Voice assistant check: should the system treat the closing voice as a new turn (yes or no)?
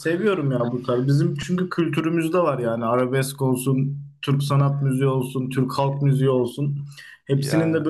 no